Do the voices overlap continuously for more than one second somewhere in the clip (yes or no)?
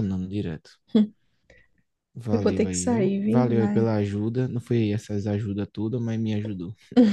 yes